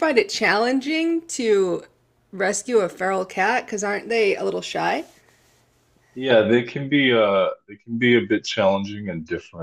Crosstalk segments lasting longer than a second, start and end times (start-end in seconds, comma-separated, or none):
none